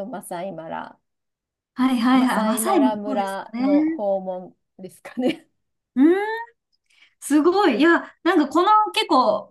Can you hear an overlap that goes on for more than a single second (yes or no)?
yes